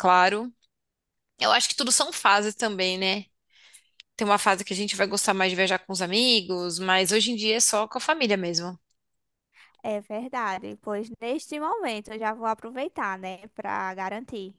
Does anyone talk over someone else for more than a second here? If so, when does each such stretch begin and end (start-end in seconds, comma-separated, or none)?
none